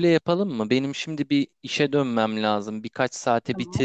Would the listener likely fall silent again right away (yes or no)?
yes